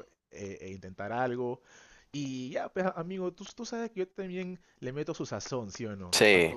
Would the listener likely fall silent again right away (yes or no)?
yes